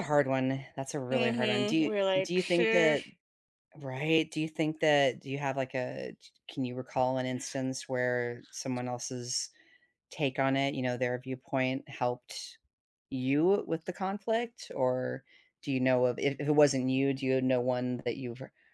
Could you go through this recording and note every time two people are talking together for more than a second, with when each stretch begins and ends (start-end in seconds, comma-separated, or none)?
1.1-3.0